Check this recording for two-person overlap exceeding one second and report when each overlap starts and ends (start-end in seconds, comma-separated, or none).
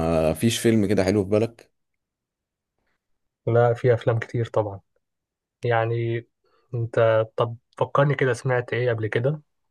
none